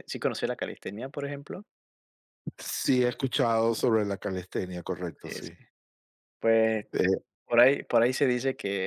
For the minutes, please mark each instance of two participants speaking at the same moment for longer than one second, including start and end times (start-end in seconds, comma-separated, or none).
none